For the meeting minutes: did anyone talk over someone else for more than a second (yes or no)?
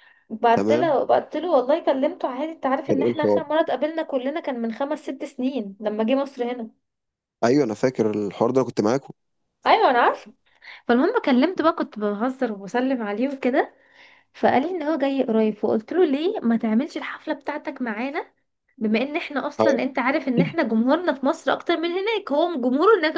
no